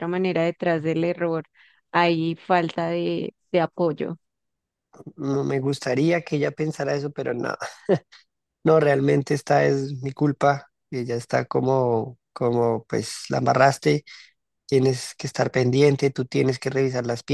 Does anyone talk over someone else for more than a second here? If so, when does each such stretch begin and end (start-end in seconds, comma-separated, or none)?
none